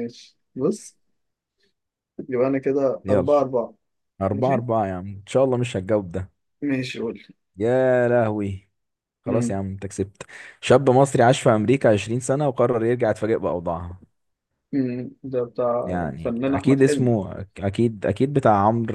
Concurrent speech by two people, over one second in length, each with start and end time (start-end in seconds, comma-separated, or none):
15.8-17.2